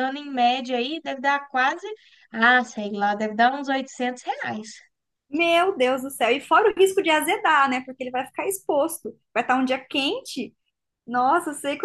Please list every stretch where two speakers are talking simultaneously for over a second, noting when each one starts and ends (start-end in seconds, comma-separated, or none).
none